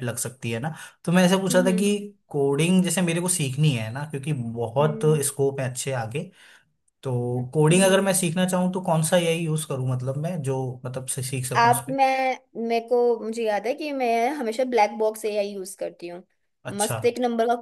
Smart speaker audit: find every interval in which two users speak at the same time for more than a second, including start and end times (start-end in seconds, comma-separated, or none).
none